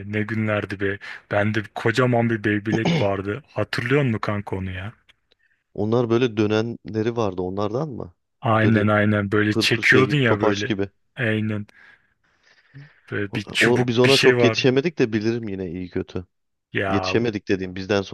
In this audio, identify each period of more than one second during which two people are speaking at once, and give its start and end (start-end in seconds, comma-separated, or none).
9.5-10.7, 13.3-14.6